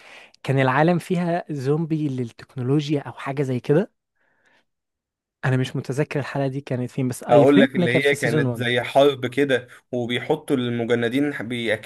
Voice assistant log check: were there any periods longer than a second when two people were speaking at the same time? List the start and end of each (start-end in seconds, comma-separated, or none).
7.3-8.7